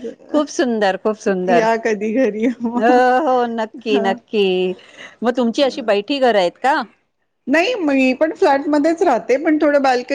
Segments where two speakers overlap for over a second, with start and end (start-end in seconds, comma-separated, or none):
none